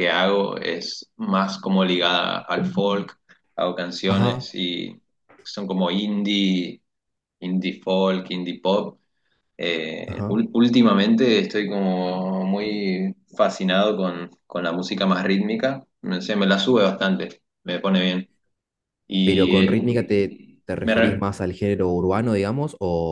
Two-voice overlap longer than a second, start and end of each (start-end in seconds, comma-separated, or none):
19.2-21.2